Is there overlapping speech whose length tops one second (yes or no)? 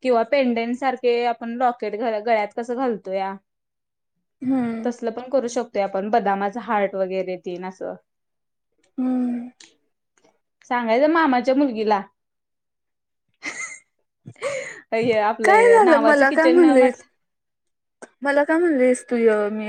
yes